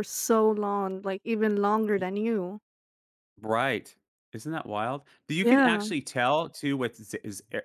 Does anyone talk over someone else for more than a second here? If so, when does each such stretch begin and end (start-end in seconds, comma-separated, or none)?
none